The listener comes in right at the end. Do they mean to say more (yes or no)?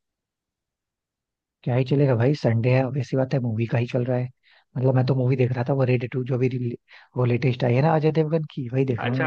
yes